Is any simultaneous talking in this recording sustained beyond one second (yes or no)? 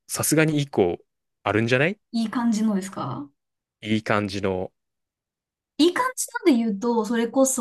no